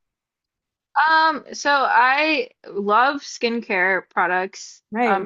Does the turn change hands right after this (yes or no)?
no